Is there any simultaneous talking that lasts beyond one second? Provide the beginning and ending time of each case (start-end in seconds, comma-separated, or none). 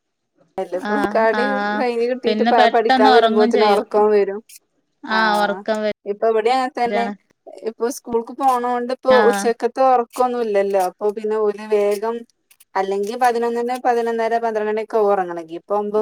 2.2-3.9